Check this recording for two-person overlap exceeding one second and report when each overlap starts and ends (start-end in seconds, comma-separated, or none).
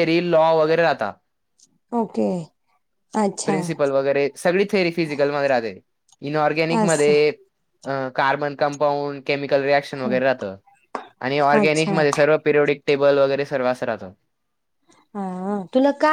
none